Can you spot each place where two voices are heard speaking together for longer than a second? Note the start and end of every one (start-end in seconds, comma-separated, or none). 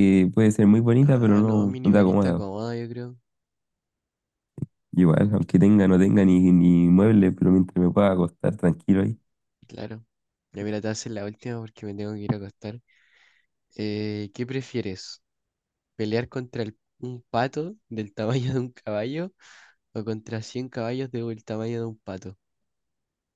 1.0-2.4